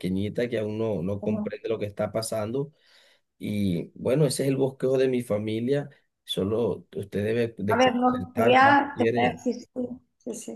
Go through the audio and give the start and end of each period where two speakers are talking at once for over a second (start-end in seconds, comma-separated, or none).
7.7-9.4